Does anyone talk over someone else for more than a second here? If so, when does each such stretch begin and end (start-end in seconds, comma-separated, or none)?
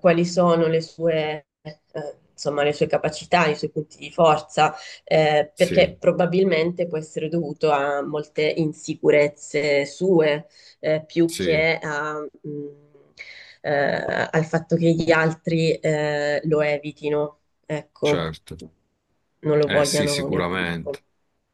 19.7-21.0